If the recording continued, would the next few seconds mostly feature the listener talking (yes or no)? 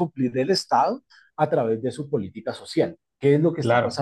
no